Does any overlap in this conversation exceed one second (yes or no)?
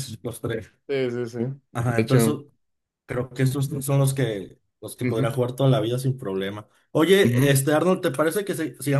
no